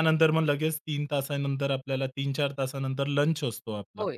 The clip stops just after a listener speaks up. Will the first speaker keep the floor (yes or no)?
yes